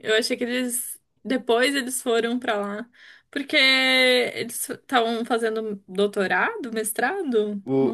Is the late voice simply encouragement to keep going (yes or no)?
no